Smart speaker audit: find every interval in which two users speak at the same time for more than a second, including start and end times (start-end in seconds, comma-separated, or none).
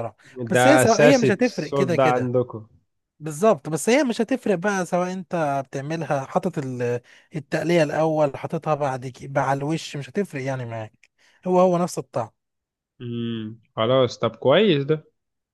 0.5-2.3